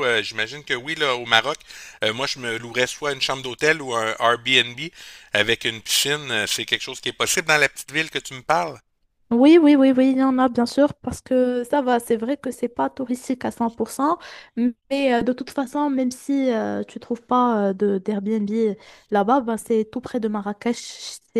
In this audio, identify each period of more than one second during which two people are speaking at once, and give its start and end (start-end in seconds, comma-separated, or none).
none